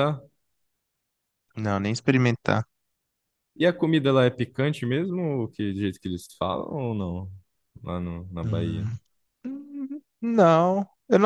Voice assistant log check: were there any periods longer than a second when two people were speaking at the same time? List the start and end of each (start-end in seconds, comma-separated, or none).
none